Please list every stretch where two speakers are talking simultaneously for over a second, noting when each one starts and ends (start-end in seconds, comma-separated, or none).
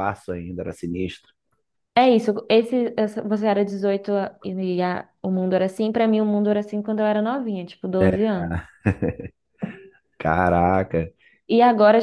none